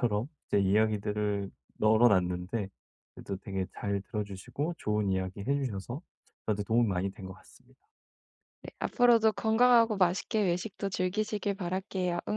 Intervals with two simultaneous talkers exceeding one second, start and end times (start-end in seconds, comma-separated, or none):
none